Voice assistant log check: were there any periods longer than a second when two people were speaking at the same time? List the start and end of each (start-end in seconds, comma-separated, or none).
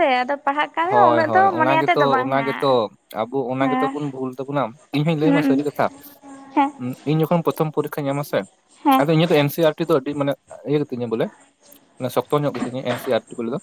0.8-2.7